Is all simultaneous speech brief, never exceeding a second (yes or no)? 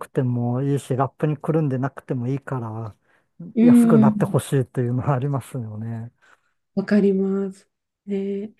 yes